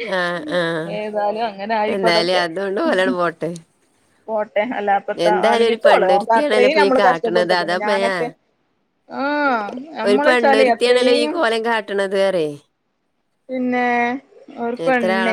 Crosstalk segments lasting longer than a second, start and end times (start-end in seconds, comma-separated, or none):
5.3-8.1